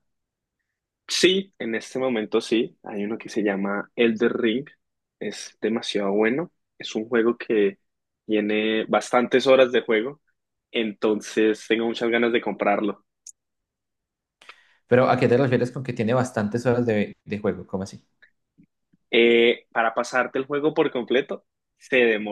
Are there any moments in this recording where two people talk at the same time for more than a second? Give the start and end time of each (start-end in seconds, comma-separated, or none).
none